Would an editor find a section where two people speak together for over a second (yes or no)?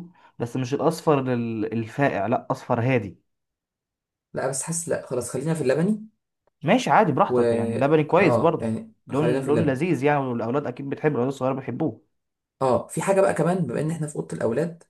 yes